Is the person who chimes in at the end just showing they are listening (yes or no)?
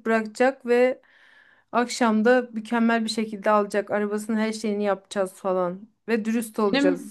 no